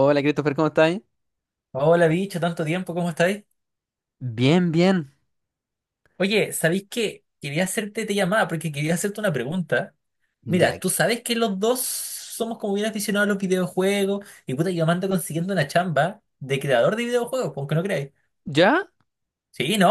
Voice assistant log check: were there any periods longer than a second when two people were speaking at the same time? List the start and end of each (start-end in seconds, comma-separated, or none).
none